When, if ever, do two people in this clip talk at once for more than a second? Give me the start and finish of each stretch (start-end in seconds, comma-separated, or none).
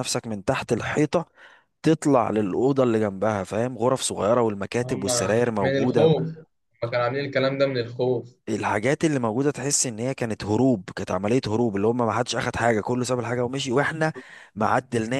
4.8-6.1